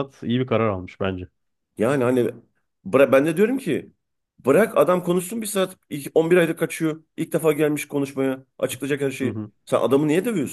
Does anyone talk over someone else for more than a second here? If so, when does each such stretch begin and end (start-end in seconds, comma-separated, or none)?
none